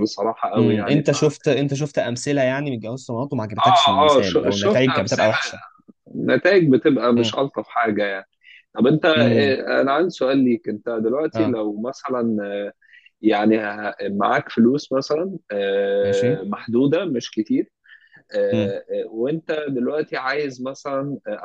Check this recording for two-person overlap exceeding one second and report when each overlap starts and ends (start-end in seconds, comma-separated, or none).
3.6-5.3